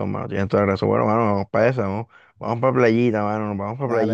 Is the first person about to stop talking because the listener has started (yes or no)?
yes